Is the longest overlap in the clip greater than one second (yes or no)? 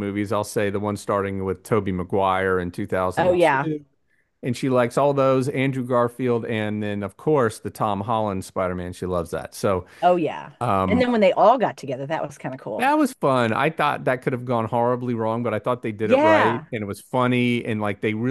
no